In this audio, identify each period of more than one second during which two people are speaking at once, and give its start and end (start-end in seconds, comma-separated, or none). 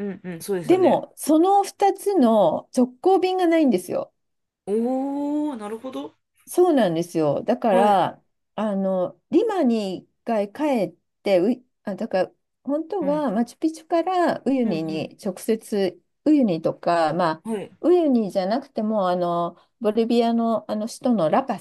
none